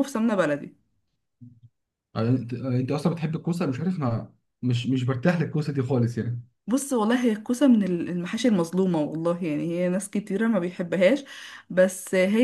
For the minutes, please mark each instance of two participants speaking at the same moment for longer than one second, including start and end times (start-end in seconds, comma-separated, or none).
none